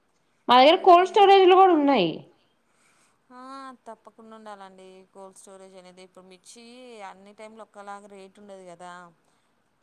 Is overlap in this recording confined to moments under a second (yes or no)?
yes